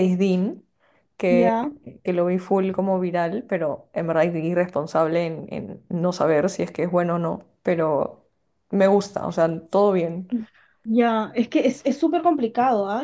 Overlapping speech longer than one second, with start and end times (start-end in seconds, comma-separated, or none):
none